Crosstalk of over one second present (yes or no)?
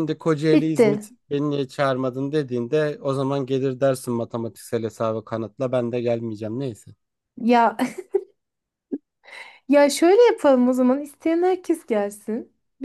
no